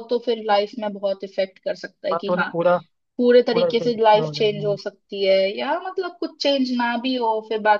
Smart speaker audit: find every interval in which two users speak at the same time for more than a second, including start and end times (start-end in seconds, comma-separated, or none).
3.5-4.8